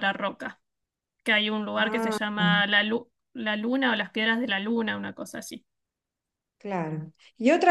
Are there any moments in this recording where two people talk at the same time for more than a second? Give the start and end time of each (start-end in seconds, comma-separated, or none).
none